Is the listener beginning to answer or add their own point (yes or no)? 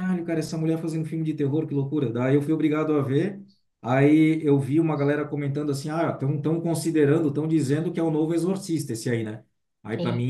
no